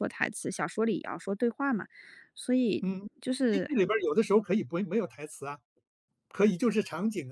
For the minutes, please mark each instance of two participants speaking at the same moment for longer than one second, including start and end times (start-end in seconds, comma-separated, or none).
none